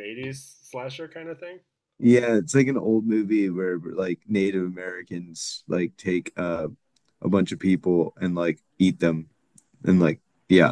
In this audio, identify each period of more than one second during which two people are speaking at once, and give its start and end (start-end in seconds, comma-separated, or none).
none